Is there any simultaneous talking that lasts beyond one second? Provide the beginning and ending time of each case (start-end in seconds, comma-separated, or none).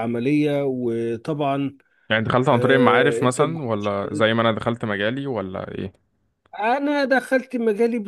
2.5-3.9